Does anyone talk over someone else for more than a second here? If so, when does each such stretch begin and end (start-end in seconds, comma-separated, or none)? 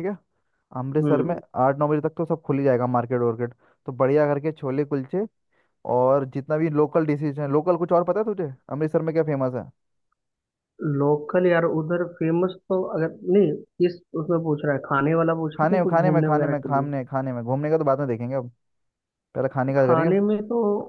15.6-16.9